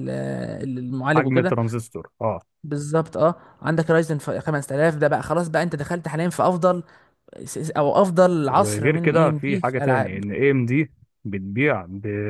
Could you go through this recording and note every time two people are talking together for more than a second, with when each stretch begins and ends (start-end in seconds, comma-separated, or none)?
8.5-10.2